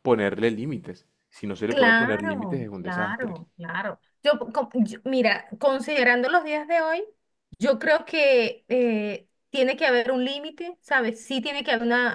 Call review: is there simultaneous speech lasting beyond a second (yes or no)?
yes